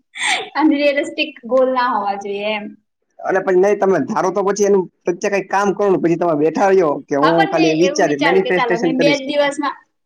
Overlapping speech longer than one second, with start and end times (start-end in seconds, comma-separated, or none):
7.2-9.3